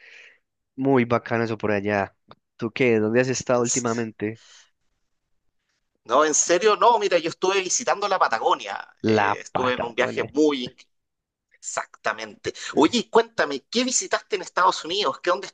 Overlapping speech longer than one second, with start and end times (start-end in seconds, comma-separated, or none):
9.0-10.3